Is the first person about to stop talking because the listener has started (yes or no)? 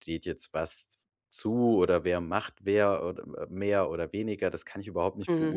no